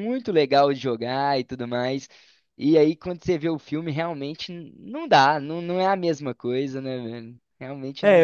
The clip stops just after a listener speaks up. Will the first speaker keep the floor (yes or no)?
no